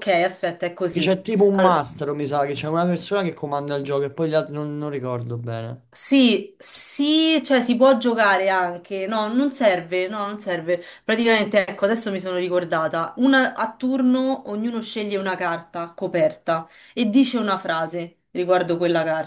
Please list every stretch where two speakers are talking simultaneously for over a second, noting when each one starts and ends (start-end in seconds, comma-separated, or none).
none